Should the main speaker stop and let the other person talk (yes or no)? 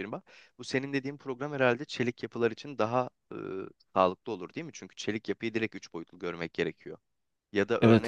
no